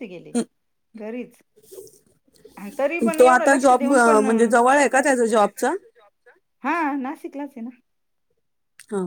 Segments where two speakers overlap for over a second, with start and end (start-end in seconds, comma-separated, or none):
3.2-5.7